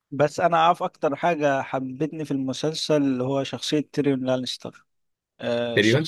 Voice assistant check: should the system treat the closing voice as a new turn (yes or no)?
no